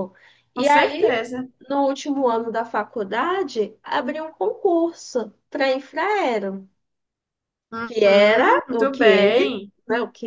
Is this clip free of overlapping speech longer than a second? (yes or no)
no